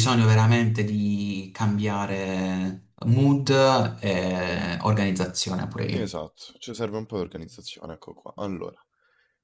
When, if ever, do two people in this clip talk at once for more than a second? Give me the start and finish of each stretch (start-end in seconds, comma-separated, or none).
none